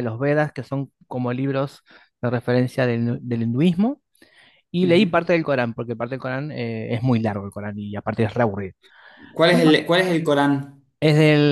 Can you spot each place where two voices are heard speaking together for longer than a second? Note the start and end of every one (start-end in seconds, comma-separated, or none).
none